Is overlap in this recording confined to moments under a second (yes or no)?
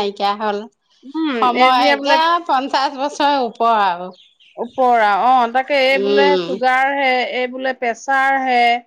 yes